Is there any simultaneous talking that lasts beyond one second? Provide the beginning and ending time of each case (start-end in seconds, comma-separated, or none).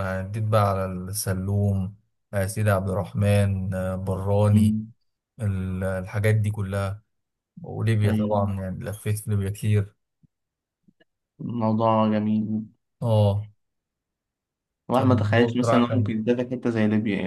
14.9-16.2